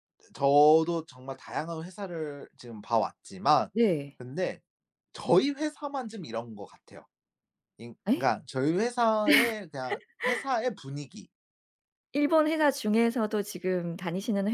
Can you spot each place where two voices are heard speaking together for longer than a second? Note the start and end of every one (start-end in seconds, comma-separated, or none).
none